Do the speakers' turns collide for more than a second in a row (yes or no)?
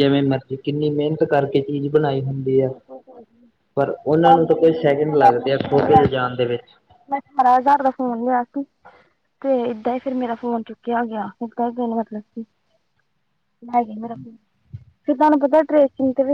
yes